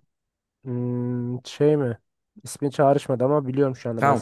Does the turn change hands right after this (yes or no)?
yes